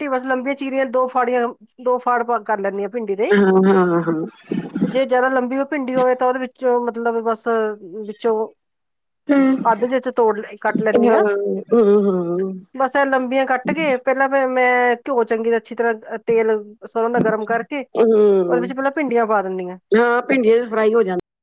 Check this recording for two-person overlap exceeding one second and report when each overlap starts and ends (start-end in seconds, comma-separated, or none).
none